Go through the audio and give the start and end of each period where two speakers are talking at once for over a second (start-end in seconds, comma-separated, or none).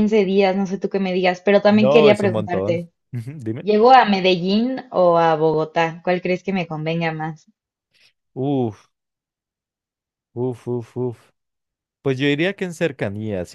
1.7-2.9